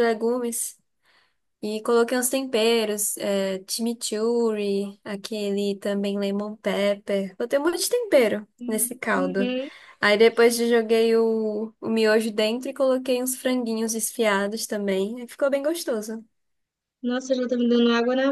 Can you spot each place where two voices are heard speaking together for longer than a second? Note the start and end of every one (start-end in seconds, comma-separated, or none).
none